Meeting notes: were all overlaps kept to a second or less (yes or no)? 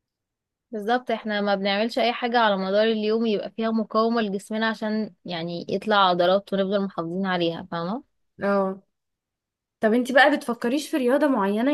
yes